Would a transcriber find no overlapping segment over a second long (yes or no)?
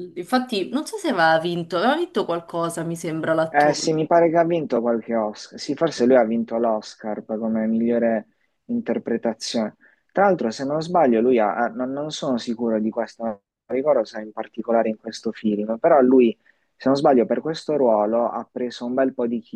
yes